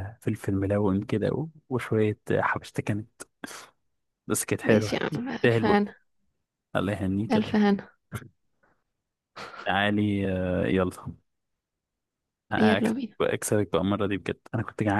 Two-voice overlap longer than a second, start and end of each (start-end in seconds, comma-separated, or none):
4.6-5.9